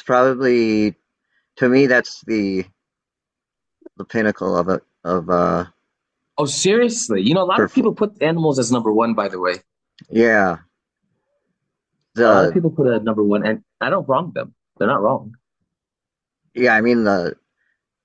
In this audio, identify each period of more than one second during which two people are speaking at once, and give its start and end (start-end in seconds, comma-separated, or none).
none